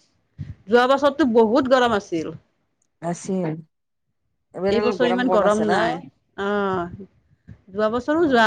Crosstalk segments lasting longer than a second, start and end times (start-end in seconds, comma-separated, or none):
none